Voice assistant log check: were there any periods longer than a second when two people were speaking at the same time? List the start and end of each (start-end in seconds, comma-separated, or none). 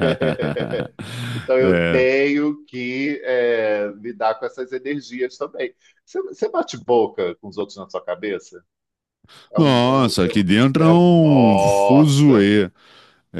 9.6-12.5